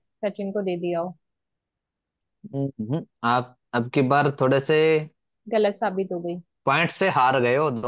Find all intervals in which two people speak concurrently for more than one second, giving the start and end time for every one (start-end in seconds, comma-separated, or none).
none